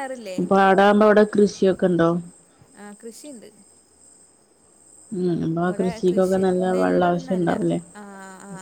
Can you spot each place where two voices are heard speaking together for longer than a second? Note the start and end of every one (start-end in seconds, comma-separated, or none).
5.6-7.5